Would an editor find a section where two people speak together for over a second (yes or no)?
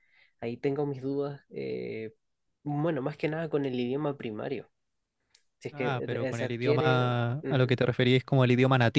yes